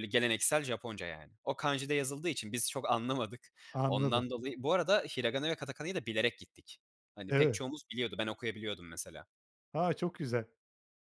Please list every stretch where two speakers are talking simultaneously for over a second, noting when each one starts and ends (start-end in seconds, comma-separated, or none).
none